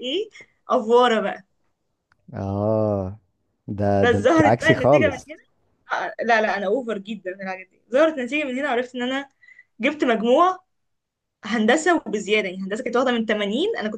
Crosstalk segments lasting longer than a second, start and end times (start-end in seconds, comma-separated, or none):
4.0-5.3